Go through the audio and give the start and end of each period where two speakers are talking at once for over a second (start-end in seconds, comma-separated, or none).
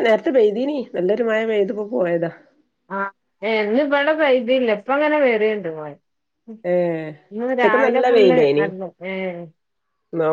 none